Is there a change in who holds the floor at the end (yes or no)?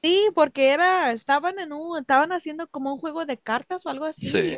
no